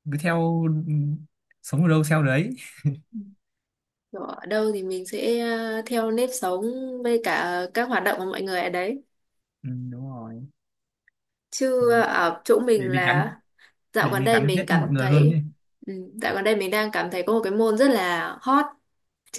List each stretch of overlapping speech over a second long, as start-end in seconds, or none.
14.0-15.4